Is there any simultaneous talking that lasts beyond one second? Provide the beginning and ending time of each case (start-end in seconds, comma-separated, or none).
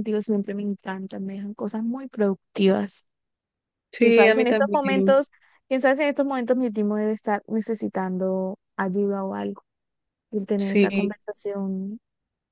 4.0-5.2